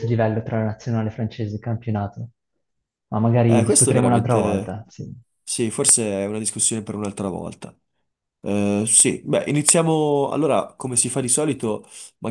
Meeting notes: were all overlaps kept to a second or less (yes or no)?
no